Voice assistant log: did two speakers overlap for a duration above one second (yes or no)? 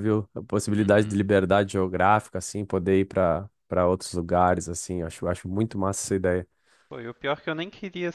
no